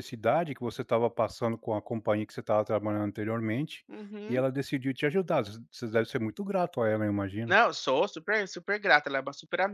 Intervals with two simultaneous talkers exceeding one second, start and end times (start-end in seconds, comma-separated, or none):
none